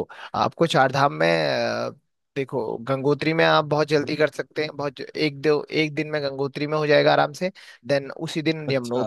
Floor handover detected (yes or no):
no